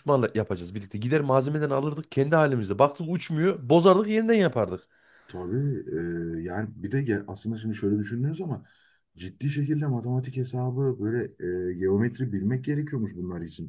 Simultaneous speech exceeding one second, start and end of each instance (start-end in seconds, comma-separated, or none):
none